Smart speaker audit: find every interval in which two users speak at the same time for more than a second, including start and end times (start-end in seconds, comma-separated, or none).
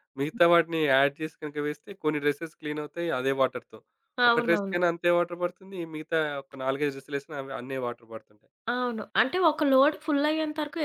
none